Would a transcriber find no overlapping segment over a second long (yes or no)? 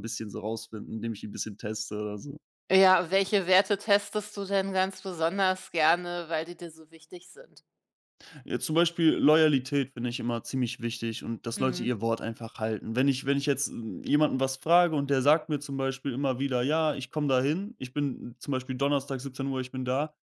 yes